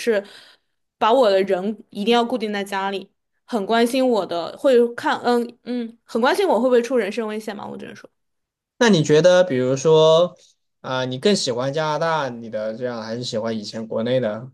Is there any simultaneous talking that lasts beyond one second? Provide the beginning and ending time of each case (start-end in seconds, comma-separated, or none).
none